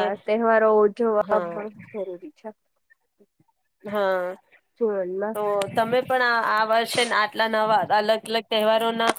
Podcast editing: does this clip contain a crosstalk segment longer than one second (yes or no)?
no